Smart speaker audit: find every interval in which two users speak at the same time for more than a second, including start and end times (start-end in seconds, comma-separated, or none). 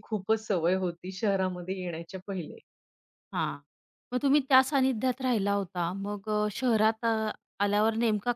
none